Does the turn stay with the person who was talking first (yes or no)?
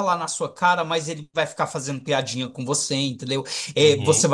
yes